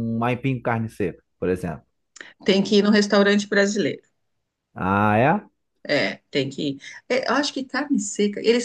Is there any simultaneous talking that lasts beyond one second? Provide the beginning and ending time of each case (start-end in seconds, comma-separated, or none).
none